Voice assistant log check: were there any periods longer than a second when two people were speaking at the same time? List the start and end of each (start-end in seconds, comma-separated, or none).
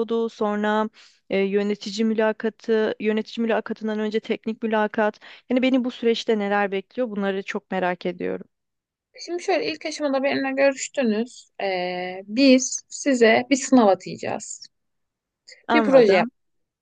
none